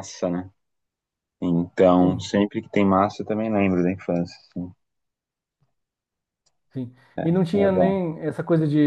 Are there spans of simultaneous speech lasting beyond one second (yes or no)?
no